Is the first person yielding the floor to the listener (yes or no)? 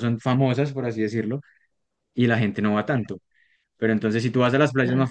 no